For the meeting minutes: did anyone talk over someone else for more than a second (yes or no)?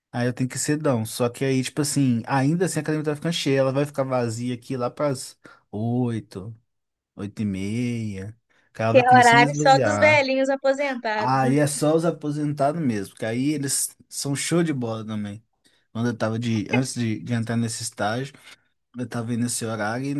yes